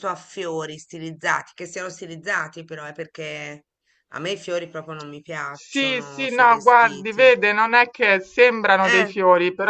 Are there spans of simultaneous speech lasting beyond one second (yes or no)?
yes